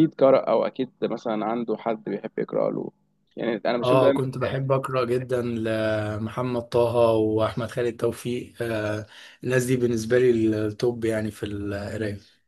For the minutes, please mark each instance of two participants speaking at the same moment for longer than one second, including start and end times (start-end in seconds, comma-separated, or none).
none